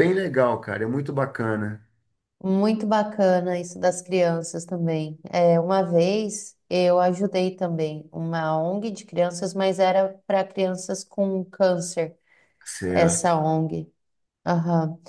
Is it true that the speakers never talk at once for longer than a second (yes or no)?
yes